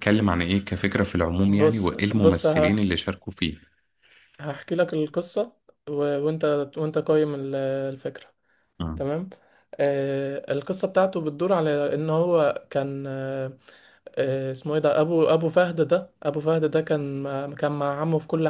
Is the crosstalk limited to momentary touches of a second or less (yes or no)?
no